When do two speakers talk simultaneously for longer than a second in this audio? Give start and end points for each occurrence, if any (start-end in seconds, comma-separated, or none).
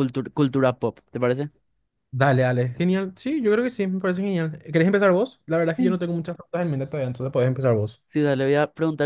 none